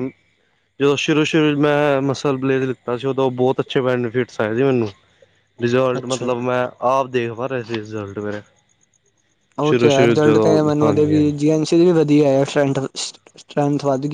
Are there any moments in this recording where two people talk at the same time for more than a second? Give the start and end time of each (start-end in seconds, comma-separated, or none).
9.7-11.3